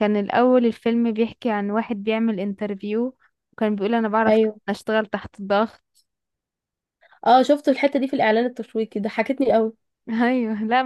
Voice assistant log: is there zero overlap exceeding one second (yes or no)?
yes